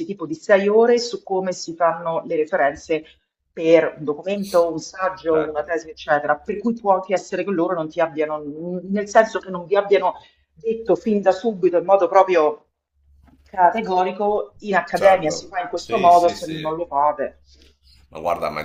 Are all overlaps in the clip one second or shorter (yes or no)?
no